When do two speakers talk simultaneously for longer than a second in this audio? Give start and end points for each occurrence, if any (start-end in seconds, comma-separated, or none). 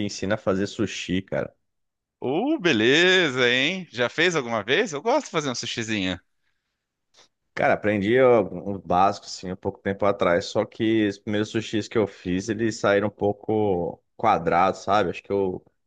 none